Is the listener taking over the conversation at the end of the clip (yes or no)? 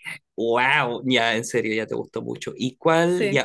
no